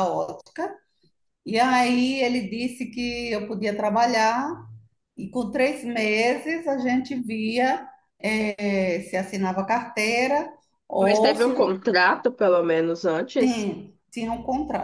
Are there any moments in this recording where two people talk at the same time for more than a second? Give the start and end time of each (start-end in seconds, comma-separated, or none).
none